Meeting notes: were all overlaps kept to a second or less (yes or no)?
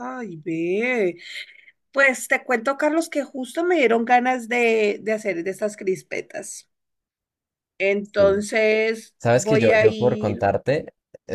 no